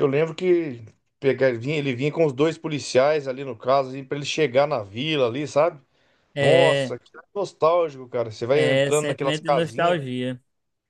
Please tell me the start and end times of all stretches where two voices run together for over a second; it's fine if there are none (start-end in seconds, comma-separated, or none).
8.5-10.0